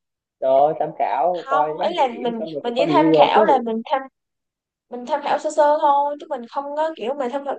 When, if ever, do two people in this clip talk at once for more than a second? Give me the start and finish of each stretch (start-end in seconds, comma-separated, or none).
1.4-3.6